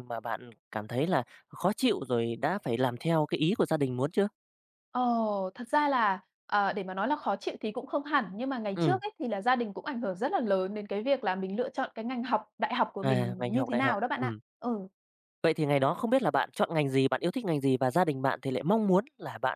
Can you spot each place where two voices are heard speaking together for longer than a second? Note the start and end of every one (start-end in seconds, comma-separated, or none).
13.0-14.4